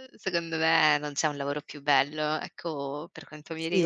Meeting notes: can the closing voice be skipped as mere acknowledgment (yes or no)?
no